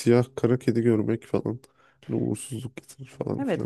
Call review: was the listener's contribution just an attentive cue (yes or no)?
no